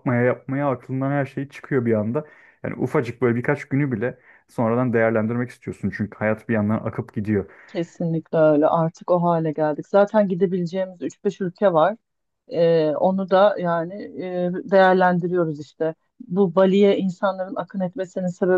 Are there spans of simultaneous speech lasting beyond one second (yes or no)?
no